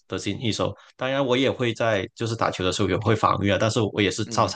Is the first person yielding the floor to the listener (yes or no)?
no